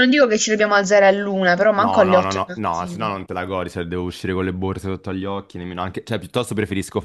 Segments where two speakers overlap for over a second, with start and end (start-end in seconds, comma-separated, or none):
1.8-3.1